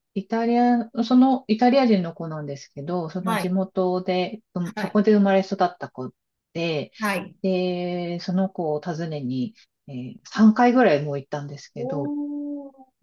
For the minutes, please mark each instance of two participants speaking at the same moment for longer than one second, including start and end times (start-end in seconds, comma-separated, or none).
none